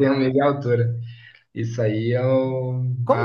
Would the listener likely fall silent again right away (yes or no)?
no